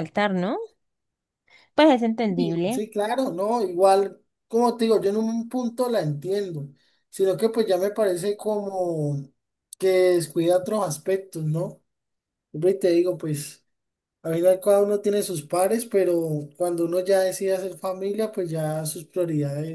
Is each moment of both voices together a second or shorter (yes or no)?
yes